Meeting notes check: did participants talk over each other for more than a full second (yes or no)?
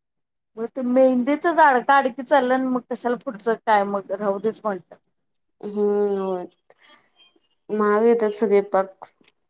no